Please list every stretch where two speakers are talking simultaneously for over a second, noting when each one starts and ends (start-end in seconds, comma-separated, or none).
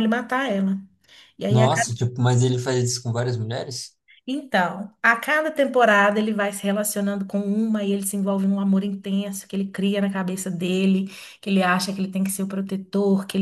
none